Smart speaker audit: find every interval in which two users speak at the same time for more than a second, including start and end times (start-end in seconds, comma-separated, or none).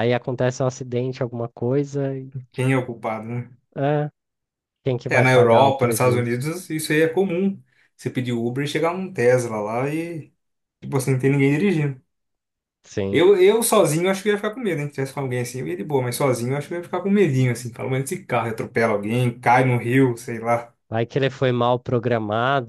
5.1-6.4